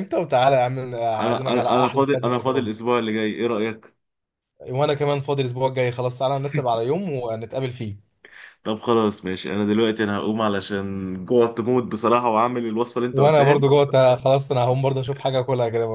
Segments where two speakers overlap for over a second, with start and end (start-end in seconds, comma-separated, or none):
1.2-2.7